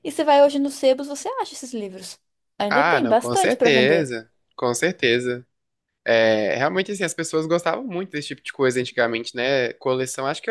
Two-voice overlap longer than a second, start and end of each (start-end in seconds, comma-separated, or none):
2.7-4.1